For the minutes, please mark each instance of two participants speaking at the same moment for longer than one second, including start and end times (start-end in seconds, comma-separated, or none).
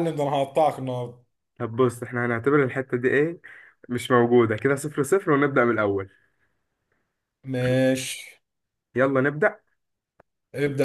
none